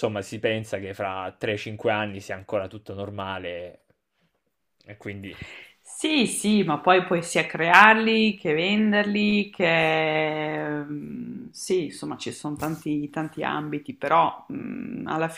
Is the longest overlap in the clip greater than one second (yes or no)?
no